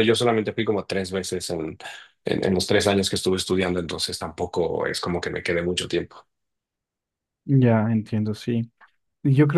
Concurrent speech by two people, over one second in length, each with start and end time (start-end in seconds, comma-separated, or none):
none